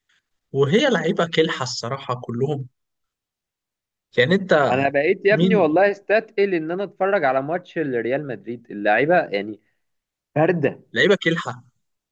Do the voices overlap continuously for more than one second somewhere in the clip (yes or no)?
no